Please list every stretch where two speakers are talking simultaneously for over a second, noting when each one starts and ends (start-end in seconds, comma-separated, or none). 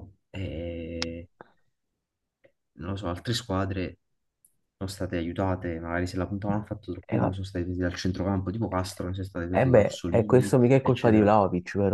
9.5-11.3